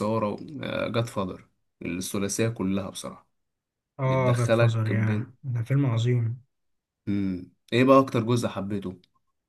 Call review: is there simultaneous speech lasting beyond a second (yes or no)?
yes